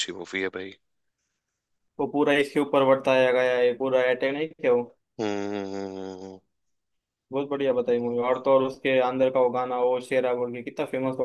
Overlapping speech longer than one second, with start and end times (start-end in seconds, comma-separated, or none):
none